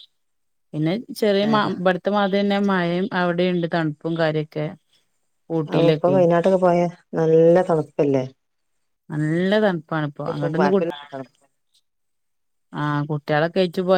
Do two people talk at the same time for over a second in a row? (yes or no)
no